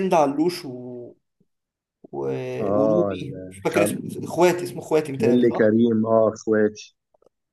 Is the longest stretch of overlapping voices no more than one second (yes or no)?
no